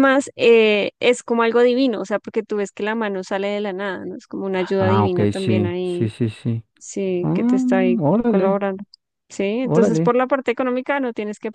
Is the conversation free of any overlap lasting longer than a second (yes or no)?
no